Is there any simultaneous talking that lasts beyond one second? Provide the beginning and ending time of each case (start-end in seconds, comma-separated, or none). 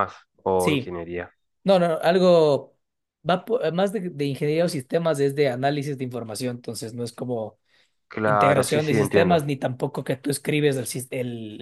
8.2-9.5